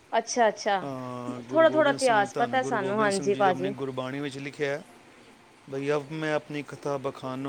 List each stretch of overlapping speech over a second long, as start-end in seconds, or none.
1.5-3.7